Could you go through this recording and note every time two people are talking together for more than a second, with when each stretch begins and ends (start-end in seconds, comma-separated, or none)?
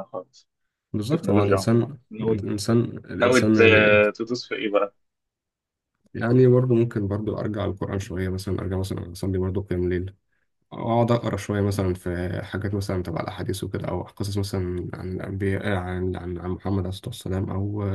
1.0-2.4